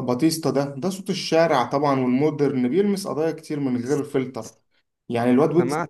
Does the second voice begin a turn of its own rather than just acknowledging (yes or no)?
no